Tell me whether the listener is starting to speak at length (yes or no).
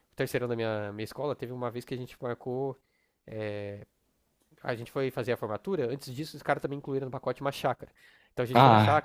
no